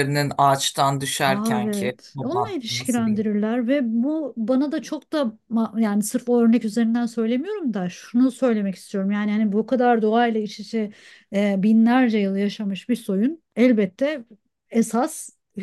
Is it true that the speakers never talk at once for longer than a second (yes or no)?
no